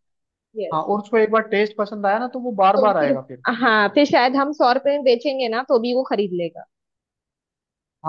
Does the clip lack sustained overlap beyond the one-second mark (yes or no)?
yes